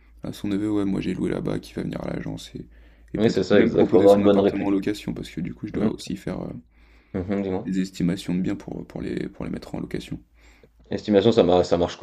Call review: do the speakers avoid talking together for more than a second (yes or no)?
no